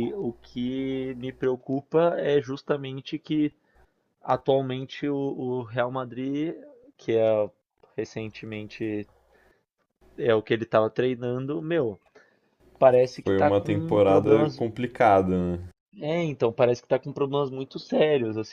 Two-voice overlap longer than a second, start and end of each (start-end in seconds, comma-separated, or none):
13.2-14.6